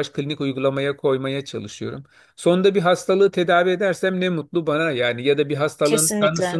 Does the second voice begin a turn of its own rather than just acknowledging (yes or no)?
no